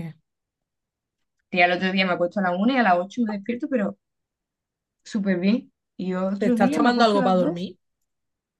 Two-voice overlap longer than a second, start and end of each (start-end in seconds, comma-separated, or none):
6.4-7.7